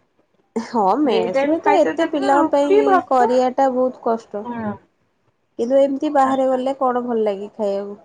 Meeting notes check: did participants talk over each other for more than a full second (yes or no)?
yes